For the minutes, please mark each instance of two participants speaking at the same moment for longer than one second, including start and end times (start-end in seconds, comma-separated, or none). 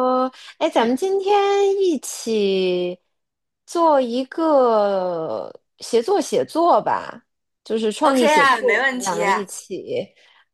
8.0-9.5